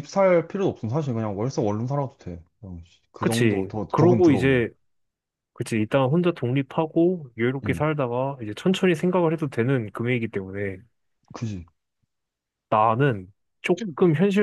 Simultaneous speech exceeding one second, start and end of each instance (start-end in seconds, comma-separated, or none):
3.2-4.7